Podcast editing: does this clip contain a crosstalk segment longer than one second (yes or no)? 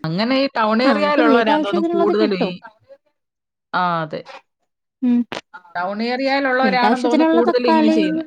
yes